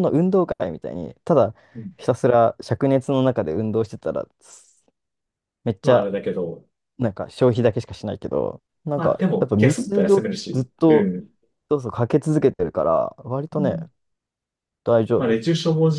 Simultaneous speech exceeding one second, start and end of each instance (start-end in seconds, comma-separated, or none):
8.9-11.1